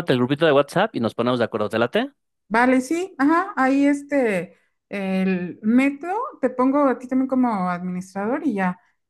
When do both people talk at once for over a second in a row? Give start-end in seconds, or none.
none